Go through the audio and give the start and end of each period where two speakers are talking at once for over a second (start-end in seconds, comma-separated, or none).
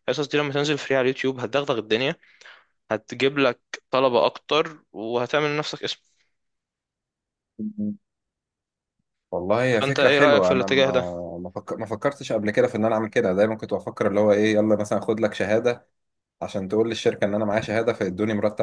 9.7-11.0